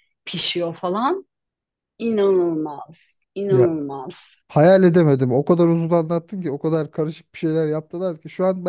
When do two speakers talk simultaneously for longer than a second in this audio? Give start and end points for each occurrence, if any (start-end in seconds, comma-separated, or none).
none